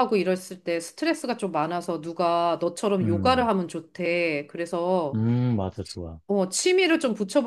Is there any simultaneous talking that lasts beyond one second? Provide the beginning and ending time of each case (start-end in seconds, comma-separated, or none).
none